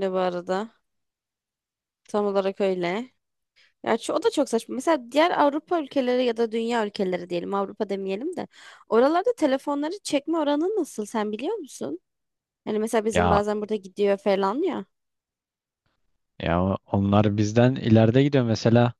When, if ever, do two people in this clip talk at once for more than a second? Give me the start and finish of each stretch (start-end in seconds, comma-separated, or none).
none